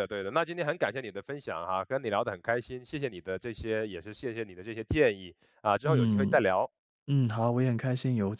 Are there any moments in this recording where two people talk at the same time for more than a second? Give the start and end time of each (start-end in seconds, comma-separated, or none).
none